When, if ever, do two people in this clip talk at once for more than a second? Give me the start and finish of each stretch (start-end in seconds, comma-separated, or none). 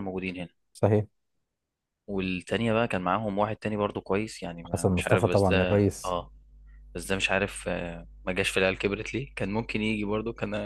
4.7-6.2